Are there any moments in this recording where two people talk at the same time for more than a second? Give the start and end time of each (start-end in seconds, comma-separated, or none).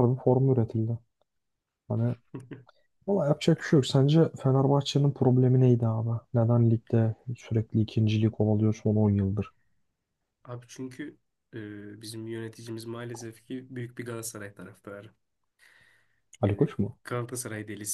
none